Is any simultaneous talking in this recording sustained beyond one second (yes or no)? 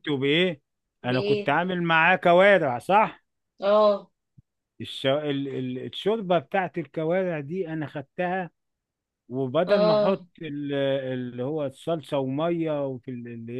no